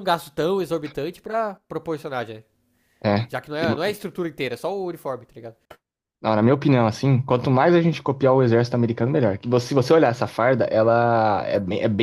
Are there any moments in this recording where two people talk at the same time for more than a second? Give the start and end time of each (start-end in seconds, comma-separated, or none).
none